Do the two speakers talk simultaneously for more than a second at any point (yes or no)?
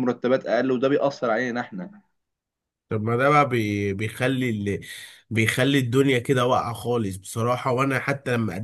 no